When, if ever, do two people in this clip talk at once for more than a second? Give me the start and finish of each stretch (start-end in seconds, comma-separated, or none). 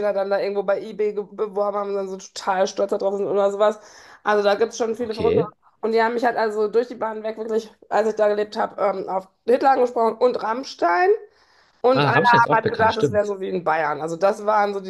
11.9-13.4